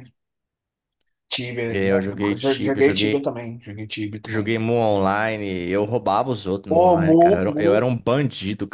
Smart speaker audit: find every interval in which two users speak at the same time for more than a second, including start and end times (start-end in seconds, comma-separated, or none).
1.7-3.3, 6.7-7.9